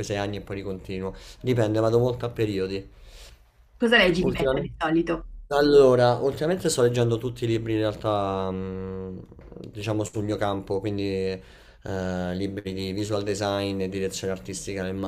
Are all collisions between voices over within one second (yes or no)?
yes